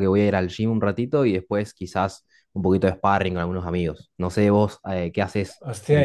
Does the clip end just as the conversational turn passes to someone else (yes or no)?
yes